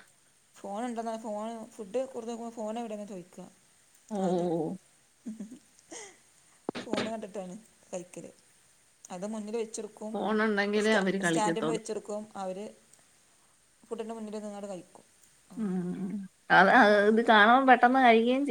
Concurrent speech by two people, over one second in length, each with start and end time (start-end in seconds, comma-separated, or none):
10.1-11.8